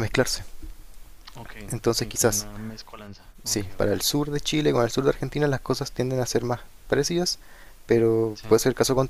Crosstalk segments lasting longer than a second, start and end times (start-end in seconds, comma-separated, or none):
none